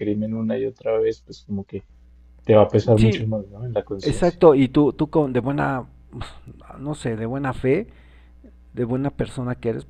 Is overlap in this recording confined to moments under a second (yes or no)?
yes